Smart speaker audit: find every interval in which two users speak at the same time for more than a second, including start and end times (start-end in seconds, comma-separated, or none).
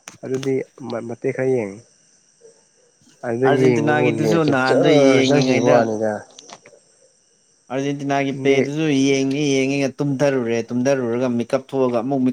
3.5-5.8